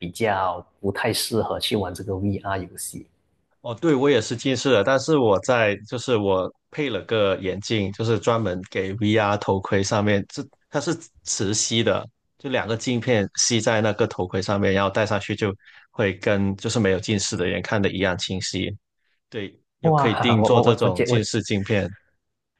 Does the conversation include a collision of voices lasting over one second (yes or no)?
yes